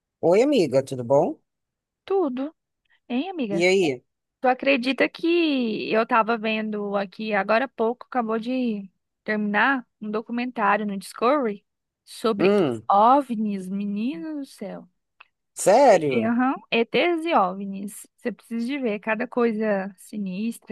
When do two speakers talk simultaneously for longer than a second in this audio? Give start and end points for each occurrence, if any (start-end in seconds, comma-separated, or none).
none